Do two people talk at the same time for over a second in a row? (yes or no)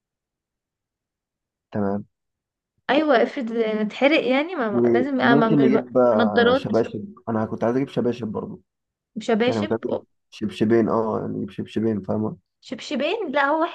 yes